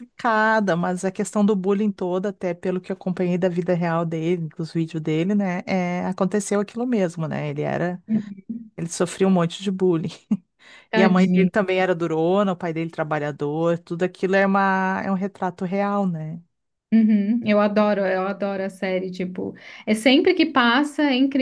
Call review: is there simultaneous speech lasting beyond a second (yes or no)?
no